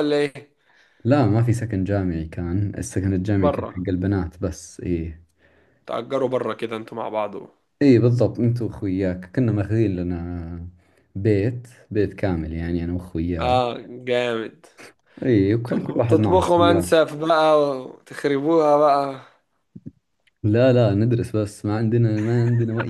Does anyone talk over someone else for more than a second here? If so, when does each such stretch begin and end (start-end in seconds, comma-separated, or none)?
15.7-16.9